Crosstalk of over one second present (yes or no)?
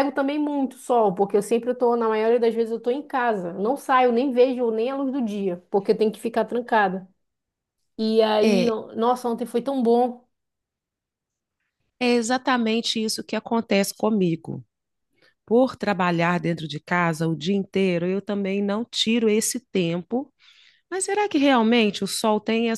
no